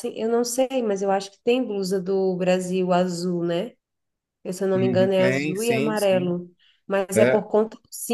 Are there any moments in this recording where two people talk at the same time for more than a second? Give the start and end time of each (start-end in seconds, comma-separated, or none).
4.8-6.3